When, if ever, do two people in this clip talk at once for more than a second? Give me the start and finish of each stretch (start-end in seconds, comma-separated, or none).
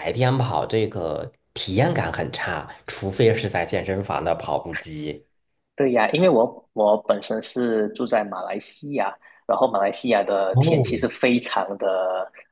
none